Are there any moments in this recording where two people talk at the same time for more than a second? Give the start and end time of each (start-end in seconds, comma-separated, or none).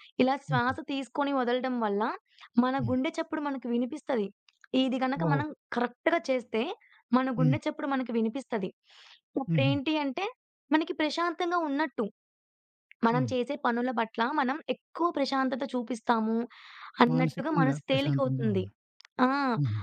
17.1-18.6